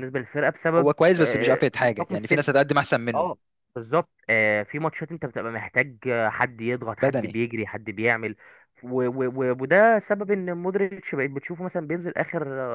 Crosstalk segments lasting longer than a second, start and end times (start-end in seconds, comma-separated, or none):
0.8-2.5